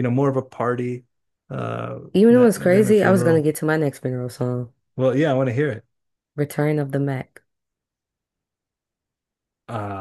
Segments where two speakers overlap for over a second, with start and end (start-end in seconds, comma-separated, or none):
2.1-3.5